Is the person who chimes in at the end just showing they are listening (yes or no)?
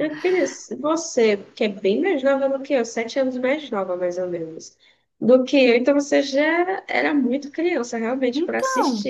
no